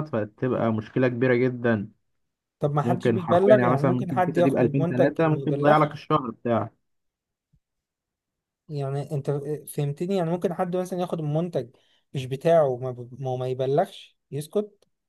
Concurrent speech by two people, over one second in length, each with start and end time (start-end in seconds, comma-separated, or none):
2.8-6.0